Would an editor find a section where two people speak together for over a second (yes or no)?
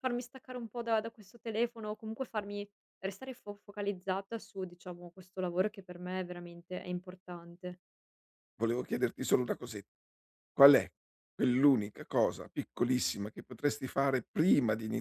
no